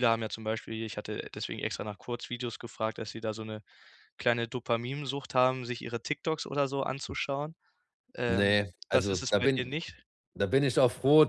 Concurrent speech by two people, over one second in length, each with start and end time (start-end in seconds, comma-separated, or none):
8.3-9.7